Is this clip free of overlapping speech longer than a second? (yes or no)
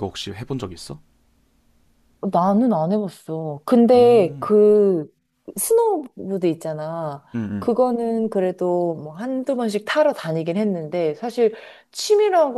yes